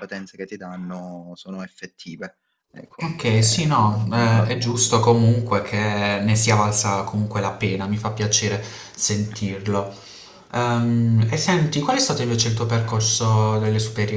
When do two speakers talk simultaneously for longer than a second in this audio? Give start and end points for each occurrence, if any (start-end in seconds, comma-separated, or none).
3.0-5.0